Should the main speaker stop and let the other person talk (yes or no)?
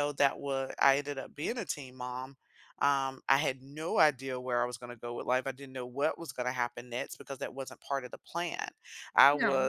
no